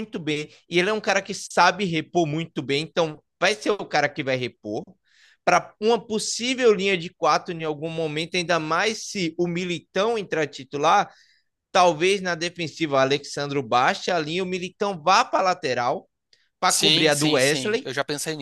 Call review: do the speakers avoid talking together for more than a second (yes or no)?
no